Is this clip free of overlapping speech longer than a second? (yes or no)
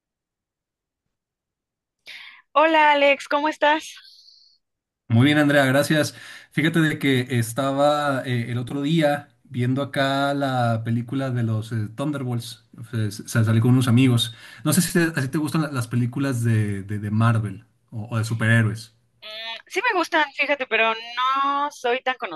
yes